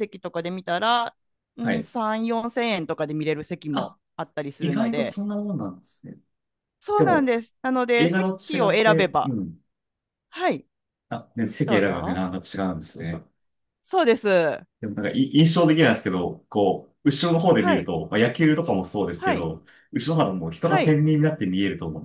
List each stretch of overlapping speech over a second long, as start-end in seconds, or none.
8.0-9.4